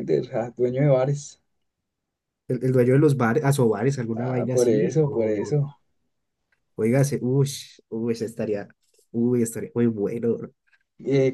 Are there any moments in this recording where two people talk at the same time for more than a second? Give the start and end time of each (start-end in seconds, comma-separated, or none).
4.2-5.6